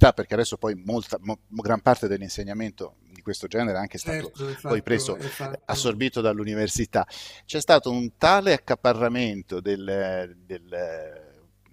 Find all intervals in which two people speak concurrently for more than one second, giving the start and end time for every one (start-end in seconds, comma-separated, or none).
3.9-6.0